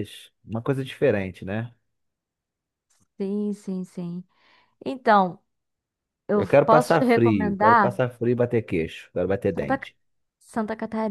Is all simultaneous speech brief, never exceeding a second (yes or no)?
no